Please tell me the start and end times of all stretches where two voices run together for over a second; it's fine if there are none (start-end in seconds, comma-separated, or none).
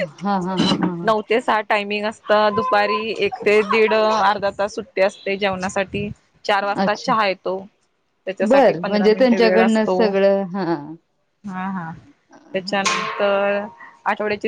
8.5-10.0